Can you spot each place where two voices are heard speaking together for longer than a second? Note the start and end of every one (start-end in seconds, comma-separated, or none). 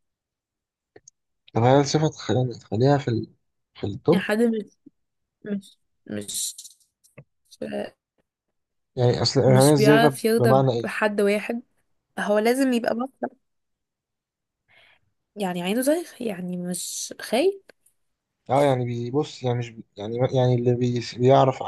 9.4-10.9